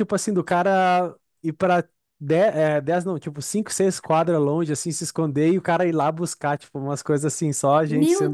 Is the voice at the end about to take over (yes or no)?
yes